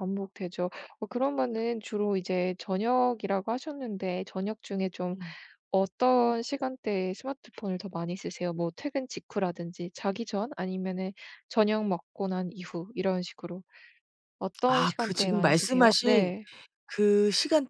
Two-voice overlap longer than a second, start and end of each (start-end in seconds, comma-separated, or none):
14.7-16.3